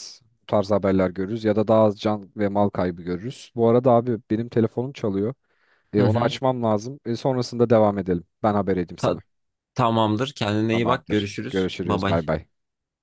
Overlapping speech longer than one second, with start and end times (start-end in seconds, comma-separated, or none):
10.7-12.2